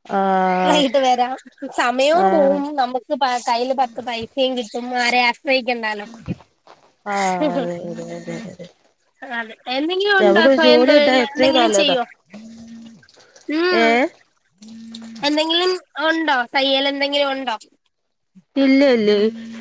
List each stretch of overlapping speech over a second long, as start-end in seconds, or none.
10.3-11.9